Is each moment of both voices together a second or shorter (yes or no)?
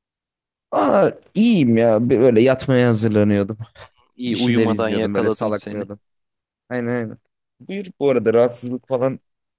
no